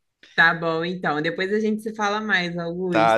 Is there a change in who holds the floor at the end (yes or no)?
yes